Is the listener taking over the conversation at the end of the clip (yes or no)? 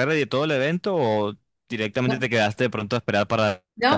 yes